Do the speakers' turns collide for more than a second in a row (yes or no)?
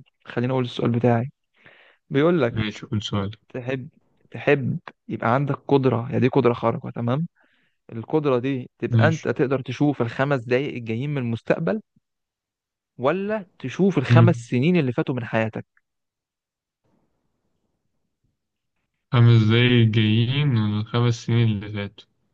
no